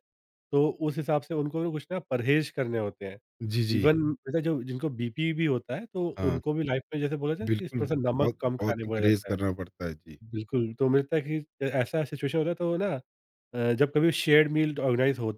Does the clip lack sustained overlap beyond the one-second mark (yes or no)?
no